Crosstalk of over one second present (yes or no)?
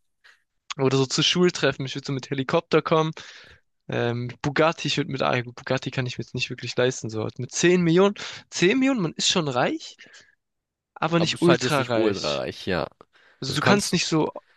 yes